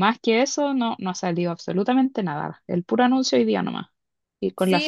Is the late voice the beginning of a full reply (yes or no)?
yes